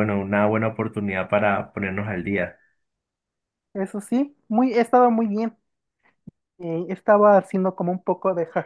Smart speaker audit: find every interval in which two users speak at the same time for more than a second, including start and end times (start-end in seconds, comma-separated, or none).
none